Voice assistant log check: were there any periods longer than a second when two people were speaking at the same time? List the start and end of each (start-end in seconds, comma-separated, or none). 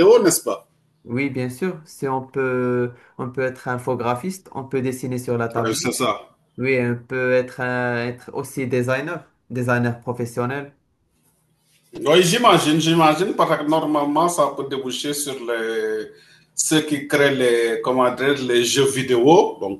none